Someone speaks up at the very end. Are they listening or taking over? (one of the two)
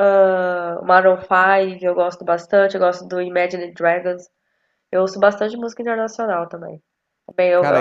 taking over